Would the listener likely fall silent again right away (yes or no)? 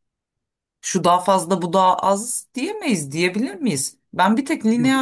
yes